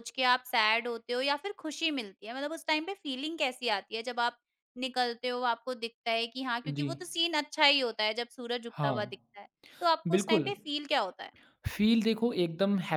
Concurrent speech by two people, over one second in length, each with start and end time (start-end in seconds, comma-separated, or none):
none